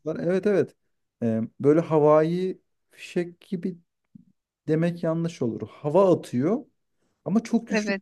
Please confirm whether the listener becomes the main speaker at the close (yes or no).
no